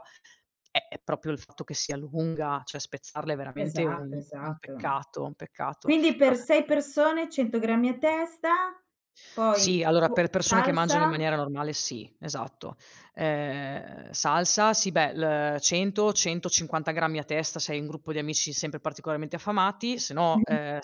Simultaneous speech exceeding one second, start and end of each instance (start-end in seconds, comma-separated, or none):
3.6-5.0, 9.5-11.1